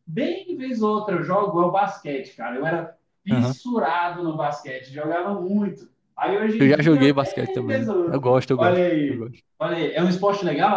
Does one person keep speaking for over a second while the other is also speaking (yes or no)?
yes